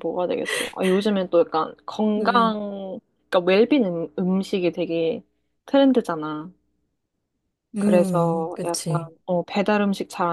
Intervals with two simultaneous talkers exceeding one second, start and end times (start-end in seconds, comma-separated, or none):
7.8-9.1